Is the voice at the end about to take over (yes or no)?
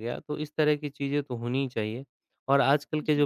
no